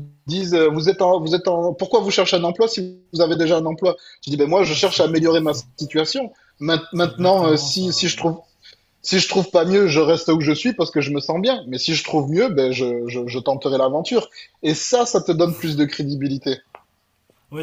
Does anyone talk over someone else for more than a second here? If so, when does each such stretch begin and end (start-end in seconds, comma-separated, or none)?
6.9-8.2